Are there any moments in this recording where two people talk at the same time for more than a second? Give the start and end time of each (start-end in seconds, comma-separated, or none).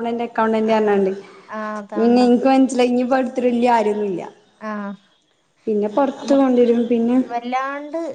none